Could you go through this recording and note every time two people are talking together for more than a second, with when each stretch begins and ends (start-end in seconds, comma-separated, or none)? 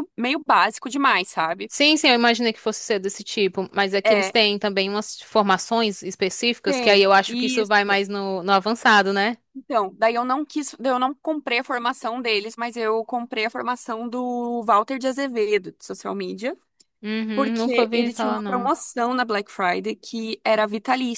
6.6-8.0, 17.3-18.7